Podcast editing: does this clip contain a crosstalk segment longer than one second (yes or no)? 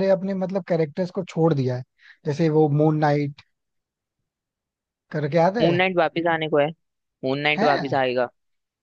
no